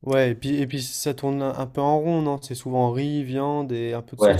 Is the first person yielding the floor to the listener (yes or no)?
yes